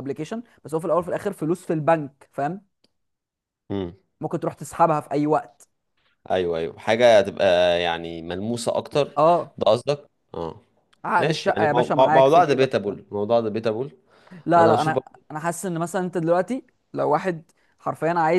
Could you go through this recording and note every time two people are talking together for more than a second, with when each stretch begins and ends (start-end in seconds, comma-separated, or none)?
11.2-13.0